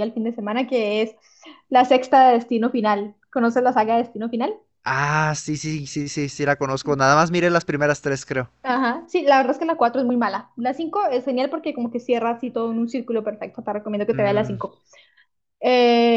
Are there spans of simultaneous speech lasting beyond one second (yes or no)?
no